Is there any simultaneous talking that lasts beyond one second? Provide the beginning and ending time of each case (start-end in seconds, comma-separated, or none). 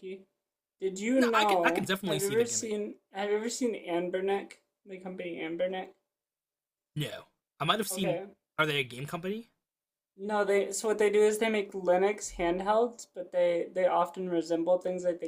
1.2-2.7